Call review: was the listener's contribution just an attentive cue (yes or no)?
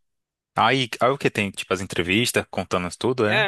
no